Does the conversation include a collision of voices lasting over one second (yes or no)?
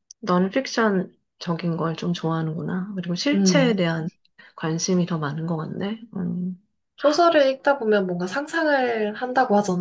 no